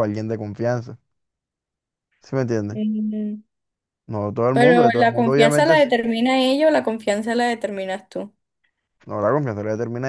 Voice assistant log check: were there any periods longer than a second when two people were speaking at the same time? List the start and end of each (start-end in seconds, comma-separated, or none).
4.5-5.9